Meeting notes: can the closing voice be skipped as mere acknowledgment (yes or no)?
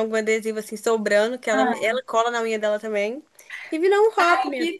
no